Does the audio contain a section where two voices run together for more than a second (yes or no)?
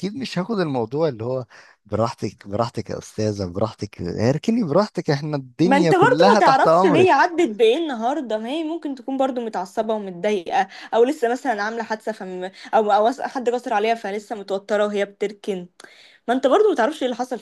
yes